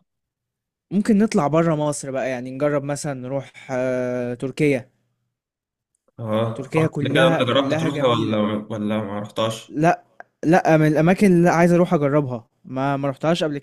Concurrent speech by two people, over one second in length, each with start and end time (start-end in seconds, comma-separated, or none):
6.6-8.4